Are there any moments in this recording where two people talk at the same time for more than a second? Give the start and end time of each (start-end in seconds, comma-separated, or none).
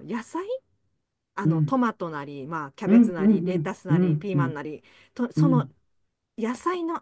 2.9-4.6